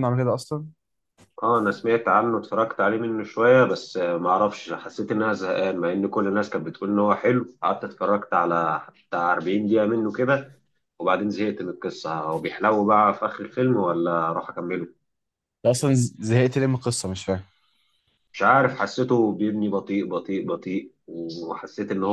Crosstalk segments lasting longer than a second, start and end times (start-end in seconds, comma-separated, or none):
none